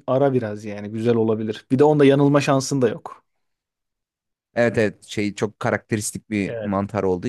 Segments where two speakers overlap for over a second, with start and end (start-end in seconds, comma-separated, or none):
none